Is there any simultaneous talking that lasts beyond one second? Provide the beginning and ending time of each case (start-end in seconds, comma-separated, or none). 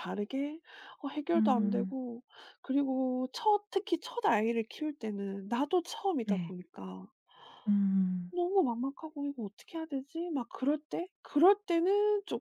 none